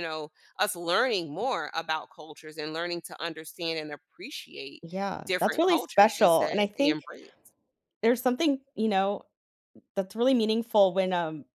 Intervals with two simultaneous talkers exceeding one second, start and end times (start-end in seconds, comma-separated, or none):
5.2-7.0